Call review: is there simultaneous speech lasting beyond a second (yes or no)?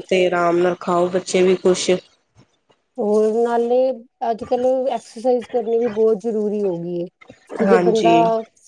no